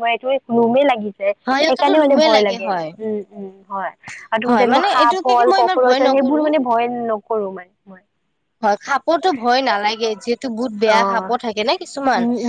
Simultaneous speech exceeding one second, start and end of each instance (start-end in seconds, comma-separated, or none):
4.5-6.4